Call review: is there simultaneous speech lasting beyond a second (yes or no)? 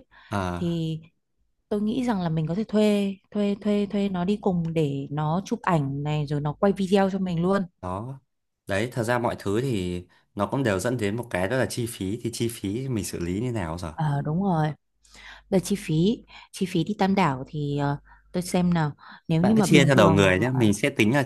yes